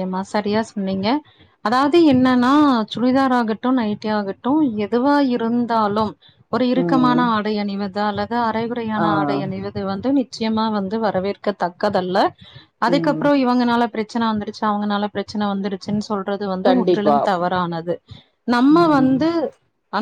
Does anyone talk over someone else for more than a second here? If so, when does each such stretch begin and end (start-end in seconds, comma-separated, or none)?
none